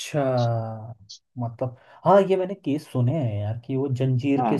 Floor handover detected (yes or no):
no